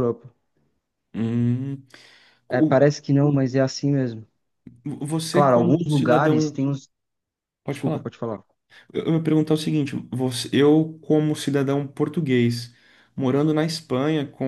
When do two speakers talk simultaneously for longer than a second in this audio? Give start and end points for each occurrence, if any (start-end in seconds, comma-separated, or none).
5.3-6.6